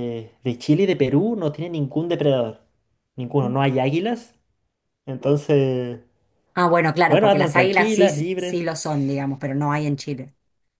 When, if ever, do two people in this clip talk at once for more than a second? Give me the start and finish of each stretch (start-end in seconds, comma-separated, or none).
7.1-8.7